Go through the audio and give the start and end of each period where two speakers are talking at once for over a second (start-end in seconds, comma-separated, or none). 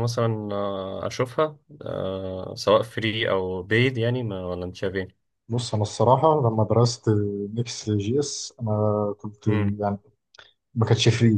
none